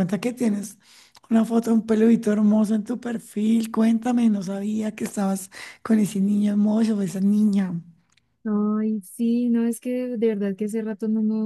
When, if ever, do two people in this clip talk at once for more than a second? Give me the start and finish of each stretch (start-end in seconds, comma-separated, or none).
none